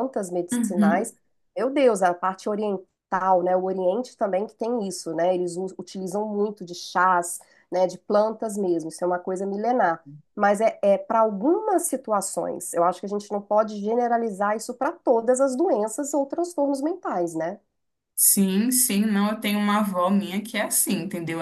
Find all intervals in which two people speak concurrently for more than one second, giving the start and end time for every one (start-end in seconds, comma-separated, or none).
none